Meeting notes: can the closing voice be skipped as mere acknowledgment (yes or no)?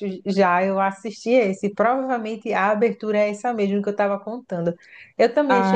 yes